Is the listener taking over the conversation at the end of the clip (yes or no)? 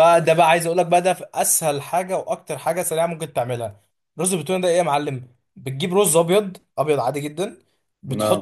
no